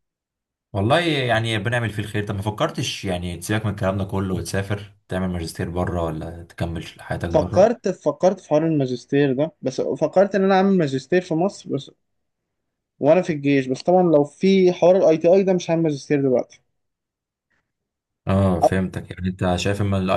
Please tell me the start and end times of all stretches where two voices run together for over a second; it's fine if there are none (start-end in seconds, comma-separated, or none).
none